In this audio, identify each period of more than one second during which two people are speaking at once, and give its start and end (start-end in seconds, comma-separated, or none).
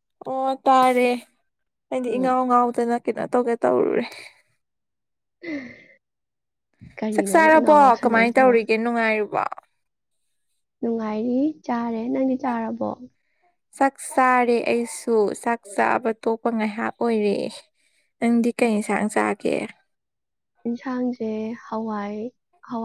7.1-8.6